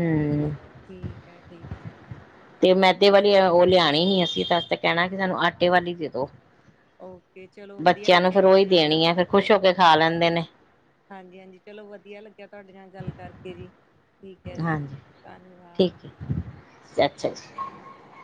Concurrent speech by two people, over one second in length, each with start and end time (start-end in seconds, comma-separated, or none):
7.8-9.5